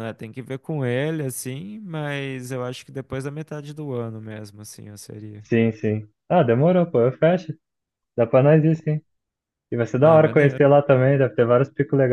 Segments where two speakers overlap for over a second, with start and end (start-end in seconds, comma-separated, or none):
none